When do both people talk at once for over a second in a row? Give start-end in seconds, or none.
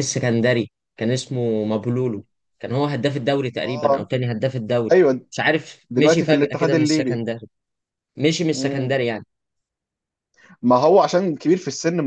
5.9-7.2